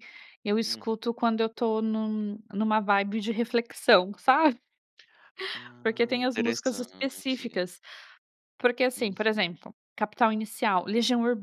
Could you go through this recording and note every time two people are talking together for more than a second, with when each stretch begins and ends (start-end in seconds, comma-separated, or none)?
5.8-7.6